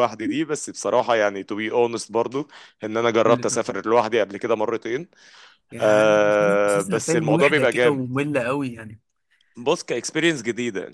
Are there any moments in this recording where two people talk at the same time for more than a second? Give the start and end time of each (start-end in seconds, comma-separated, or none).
5.8-8.0